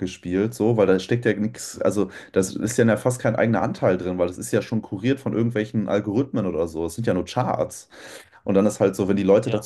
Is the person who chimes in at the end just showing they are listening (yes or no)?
yes